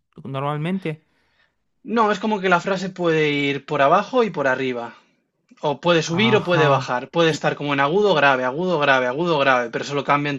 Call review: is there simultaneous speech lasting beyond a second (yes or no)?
yes